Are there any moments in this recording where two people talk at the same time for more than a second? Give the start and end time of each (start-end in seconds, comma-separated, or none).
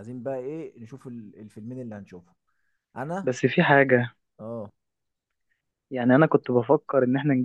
none